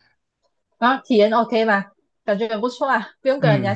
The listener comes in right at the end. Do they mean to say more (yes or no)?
yes